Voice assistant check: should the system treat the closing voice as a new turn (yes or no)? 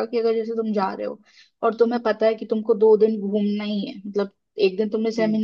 no